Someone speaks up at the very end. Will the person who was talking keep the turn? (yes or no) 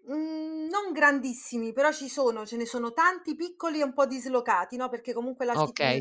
no